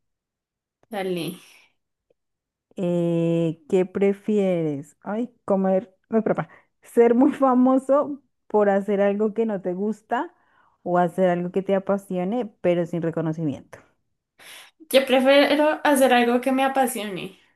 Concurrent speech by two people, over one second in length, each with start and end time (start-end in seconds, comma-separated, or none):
none